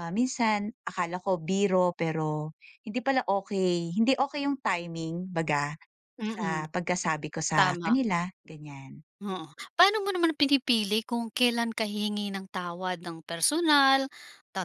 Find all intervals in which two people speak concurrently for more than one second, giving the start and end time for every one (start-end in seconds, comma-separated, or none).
none